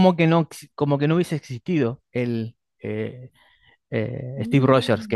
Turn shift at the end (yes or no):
no